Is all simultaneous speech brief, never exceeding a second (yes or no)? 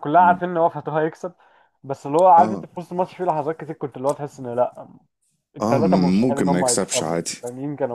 no